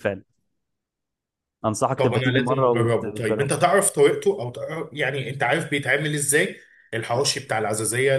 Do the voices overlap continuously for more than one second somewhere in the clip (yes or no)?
yes